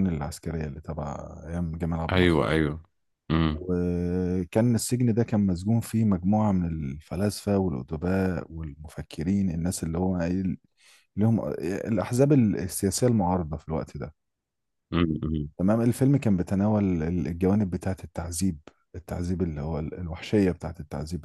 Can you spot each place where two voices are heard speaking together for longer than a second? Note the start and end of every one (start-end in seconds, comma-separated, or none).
none